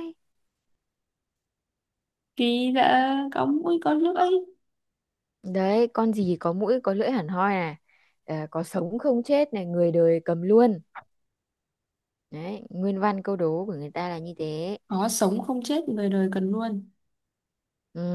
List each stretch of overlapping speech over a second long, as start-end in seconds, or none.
none